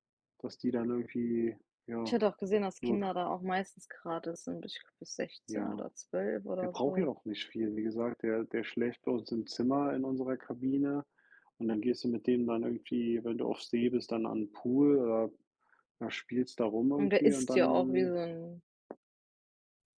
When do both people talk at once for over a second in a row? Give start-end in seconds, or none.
16.9-18.1